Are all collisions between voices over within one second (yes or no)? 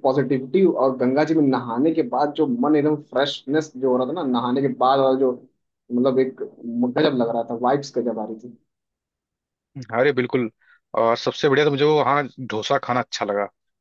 yes